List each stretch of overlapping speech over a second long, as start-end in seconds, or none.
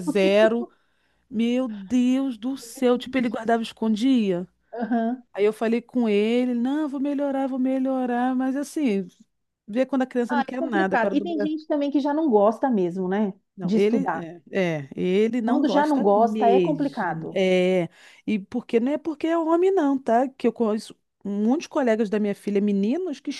10.3-11.5, 15.4-17.4